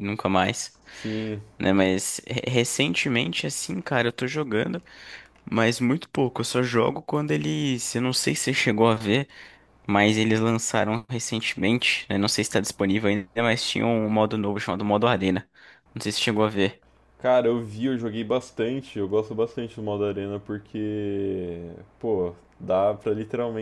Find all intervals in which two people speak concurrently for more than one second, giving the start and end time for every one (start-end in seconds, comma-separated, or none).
none